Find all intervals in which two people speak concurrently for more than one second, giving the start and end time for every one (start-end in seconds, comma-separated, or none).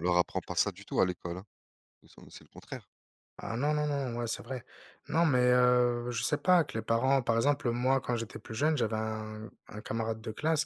none